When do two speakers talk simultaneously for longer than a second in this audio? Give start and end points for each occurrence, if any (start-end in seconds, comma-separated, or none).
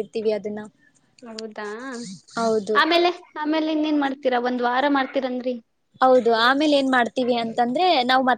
none